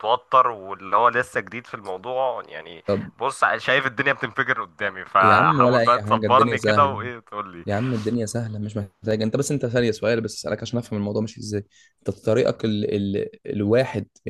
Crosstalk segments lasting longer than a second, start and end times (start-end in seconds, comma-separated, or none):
5.2-7.0